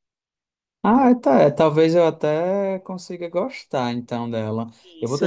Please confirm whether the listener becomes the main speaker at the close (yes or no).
yes